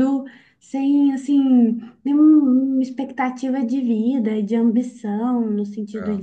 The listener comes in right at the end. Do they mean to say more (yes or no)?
no